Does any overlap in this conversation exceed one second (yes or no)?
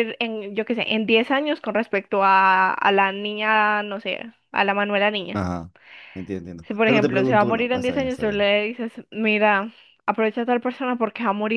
yes